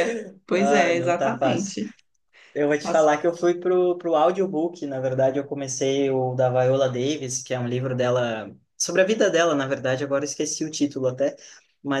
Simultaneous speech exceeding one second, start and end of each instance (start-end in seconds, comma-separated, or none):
0.6-1.8